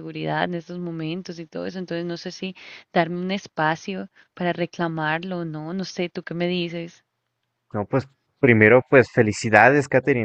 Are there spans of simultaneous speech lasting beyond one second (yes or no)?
no